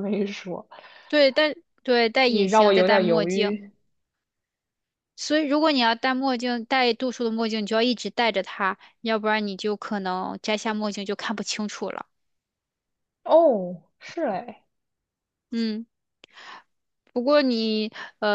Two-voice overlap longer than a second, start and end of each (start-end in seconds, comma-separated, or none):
2.2-3.6